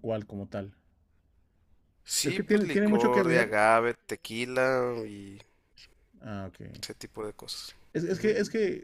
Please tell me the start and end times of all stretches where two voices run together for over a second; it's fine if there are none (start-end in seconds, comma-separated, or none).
2.2-3.6